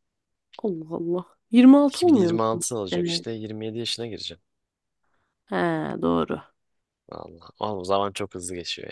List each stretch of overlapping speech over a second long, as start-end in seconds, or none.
1.9-3.3